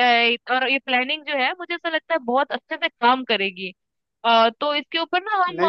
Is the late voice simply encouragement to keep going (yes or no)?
yes